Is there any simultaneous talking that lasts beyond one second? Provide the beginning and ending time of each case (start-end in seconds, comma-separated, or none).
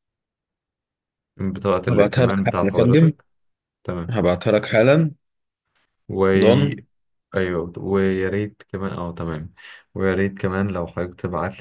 1.9-3.1